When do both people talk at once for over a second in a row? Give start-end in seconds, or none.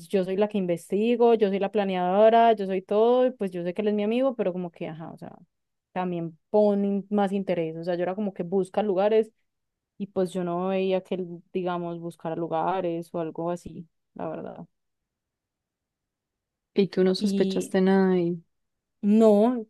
none